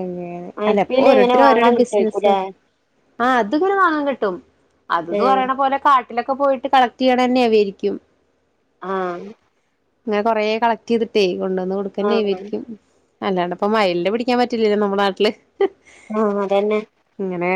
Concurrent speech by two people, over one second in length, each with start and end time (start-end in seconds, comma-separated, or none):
0.7-2.3